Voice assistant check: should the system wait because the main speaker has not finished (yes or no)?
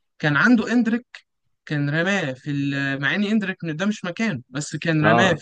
yes